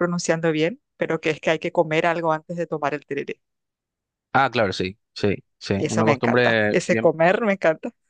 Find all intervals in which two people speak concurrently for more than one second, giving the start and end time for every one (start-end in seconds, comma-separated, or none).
5.8-7.1